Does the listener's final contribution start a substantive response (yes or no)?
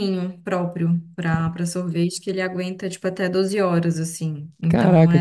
yes